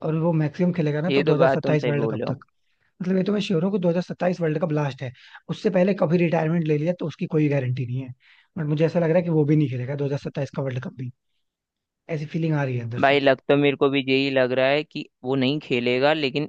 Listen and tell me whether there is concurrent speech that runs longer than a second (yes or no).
yes